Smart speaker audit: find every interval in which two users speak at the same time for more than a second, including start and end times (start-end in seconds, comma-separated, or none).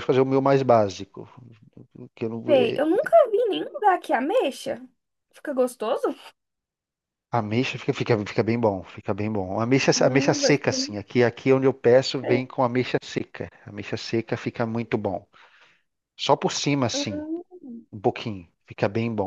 9.9-11.2